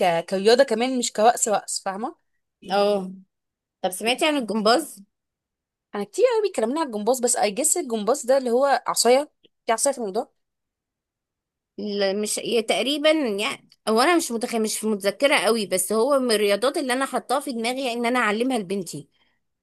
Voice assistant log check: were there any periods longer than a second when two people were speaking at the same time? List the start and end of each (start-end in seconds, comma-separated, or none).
none